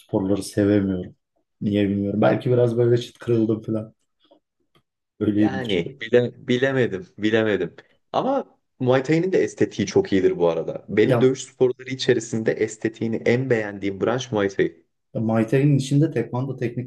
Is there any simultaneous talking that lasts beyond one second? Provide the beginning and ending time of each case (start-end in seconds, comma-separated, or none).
none